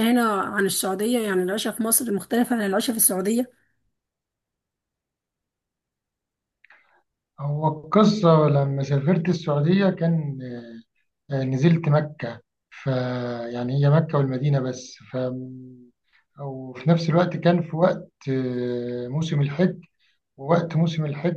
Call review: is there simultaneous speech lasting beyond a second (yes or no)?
no